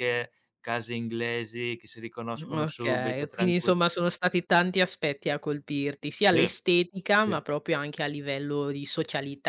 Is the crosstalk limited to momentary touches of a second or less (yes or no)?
no